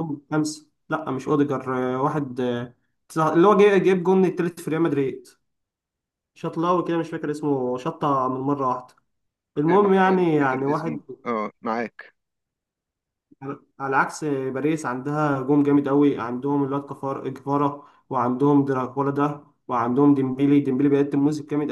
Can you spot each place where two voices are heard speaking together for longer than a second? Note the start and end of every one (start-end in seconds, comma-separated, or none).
9.7-11.0